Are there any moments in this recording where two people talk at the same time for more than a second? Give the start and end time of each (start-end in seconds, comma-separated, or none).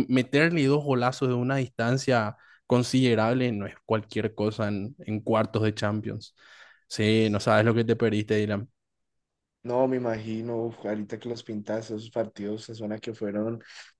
none